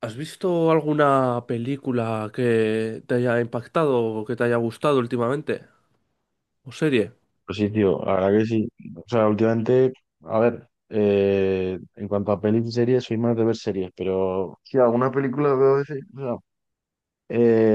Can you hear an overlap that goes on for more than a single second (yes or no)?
no